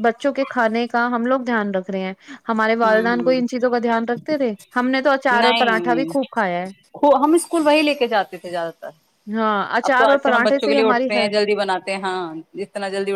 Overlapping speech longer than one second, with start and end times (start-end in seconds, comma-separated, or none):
9.9-11.3